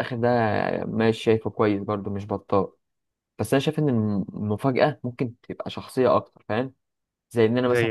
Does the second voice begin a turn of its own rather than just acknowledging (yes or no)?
no